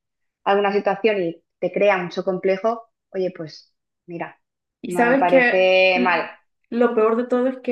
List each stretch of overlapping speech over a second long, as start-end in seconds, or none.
4.8-6.2